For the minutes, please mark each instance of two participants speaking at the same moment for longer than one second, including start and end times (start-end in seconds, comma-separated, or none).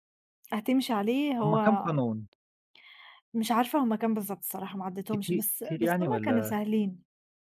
5.1-6.6